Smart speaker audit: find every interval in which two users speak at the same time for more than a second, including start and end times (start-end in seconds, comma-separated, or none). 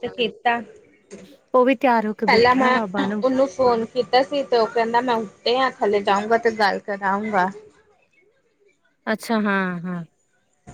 1.6-3.2